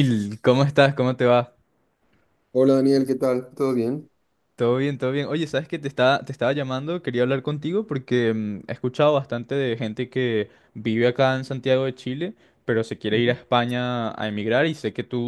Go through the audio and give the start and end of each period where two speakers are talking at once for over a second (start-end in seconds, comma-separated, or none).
none